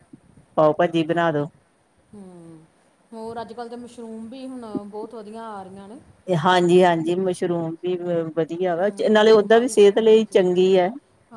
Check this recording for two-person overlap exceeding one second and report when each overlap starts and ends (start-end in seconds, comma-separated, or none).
8.9-10.4